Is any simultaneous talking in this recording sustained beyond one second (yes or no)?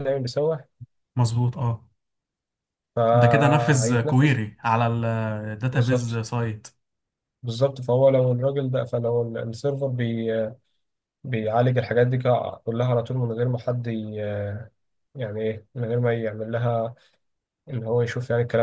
yes